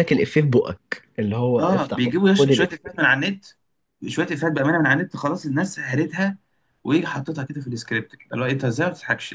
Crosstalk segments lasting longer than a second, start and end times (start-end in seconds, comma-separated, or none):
1.6-2.9